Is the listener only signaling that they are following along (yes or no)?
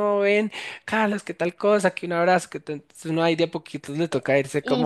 no